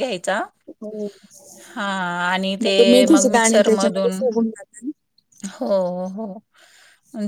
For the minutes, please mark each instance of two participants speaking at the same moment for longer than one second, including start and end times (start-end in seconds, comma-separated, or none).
2.6-4.2